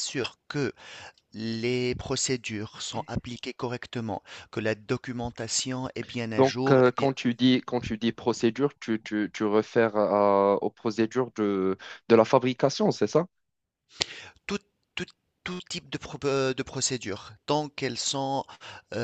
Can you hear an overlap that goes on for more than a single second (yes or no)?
no